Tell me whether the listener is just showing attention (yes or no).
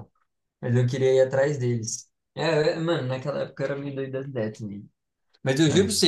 yes